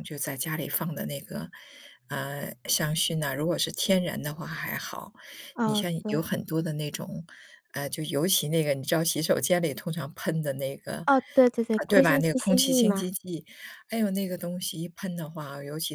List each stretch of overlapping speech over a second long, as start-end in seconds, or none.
11.7-13.1